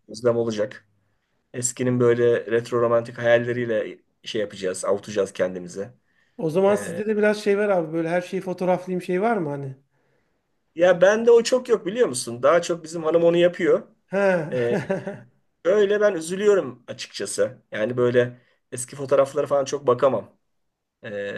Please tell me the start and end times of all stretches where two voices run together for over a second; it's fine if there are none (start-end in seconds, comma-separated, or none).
none